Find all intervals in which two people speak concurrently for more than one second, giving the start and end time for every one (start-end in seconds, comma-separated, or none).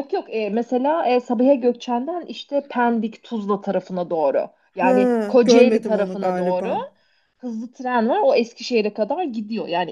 4.8-6.7